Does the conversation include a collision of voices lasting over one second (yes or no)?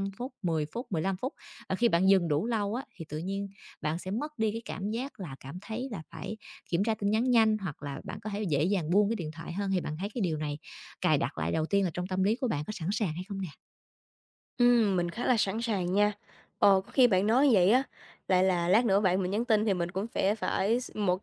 no